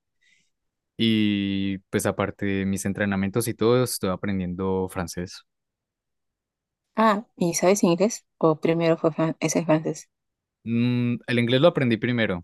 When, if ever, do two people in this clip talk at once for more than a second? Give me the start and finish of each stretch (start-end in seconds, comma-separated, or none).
none